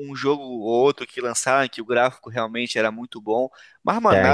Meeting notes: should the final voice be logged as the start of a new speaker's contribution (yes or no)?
no